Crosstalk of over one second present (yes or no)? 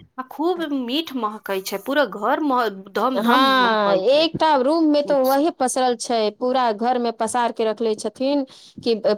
no